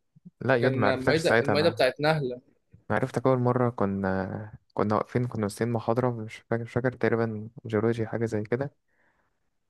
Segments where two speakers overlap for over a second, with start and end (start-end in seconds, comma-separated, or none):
0.6-1.8